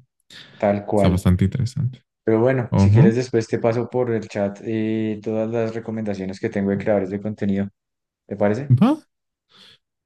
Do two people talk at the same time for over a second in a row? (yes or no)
no